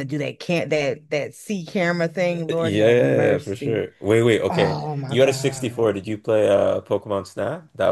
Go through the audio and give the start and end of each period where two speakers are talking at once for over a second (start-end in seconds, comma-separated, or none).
2.3-3.9, 4.5-6.0